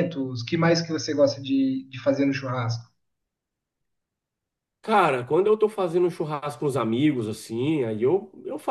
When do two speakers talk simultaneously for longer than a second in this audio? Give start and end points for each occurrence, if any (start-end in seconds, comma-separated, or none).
none